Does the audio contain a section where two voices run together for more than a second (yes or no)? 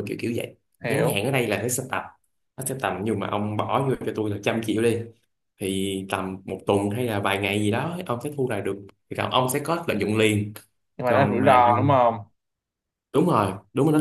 no